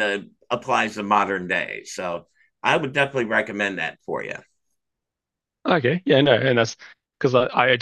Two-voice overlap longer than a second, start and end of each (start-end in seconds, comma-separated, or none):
none